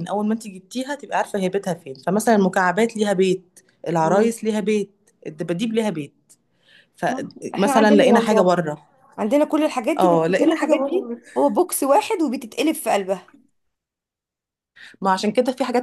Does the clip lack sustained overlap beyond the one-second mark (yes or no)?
no